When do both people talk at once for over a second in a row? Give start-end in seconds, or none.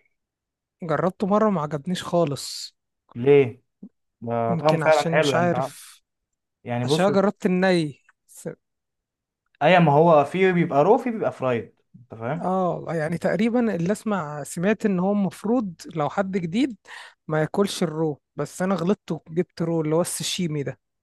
4.5-5.7